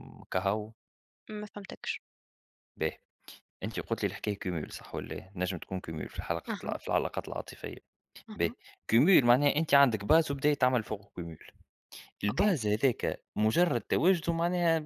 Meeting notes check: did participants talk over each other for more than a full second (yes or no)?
no